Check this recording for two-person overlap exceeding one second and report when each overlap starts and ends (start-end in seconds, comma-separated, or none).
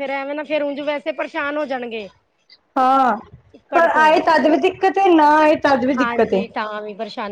none